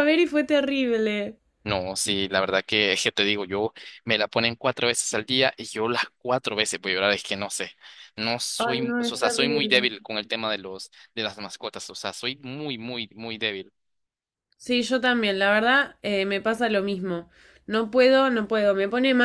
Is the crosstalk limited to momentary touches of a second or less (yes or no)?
no